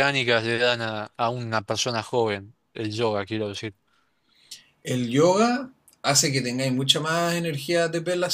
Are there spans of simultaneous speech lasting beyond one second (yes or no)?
no